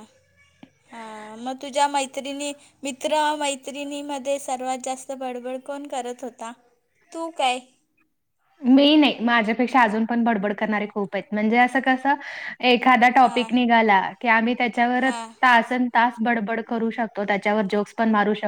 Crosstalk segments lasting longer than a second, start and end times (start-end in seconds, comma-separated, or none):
none